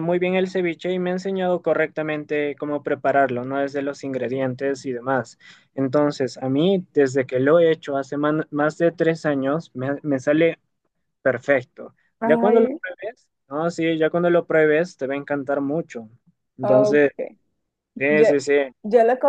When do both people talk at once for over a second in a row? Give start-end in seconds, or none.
none